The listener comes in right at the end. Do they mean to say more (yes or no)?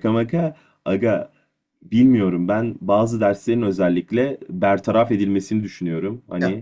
no